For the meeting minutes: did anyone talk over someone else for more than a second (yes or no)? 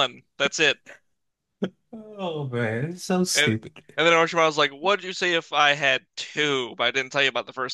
no